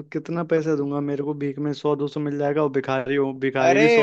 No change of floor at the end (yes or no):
no